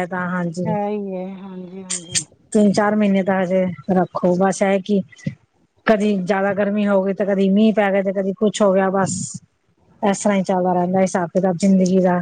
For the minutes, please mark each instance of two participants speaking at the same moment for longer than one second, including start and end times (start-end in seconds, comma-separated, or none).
none